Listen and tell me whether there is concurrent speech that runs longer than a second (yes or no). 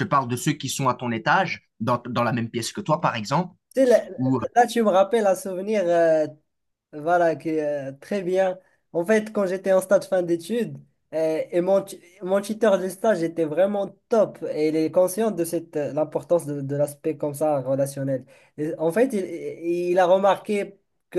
no